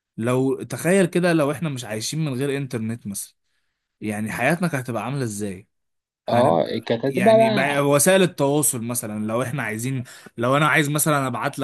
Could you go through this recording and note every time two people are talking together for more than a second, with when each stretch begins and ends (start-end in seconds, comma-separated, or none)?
6.3-7.8